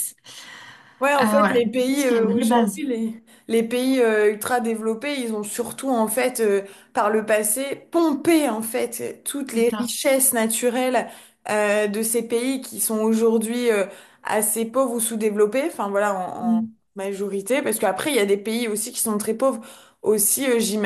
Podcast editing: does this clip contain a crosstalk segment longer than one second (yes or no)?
yes